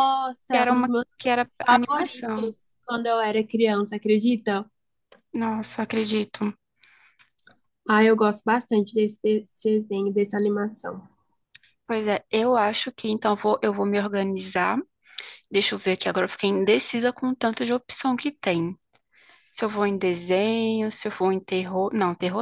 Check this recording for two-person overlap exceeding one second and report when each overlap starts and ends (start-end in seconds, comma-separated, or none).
0.5-2.5